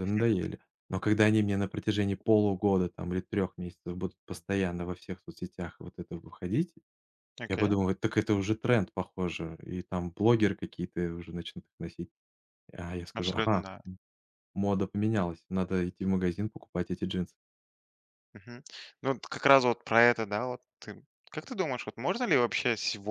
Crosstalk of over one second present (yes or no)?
no